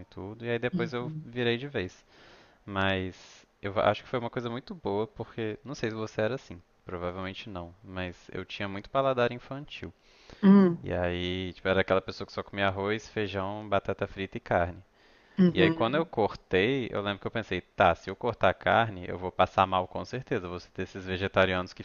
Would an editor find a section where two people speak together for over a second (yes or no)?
no